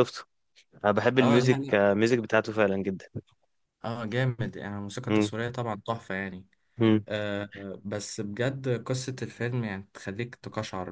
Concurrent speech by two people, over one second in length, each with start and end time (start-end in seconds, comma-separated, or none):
none